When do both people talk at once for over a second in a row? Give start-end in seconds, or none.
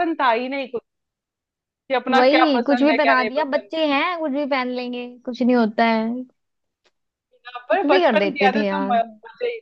2.1-3.9, 7.7-9.0